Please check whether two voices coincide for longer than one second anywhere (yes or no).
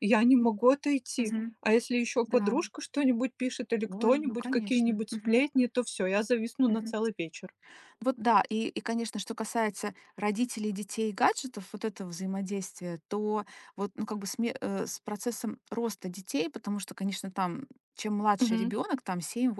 yes